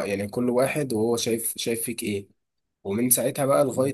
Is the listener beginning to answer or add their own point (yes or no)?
no